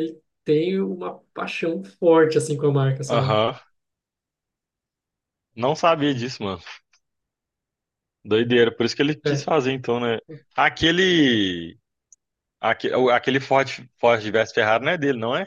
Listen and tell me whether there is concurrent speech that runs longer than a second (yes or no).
no